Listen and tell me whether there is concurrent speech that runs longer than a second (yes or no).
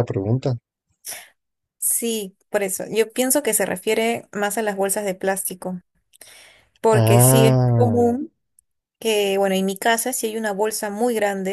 yes